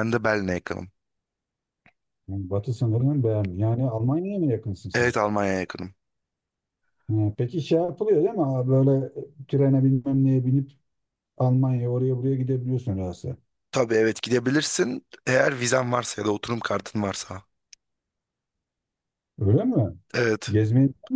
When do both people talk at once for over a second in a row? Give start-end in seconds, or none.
none